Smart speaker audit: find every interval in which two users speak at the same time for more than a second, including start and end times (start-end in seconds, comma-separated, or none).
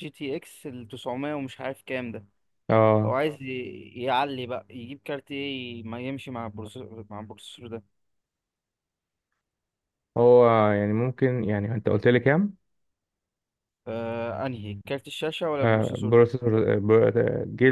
none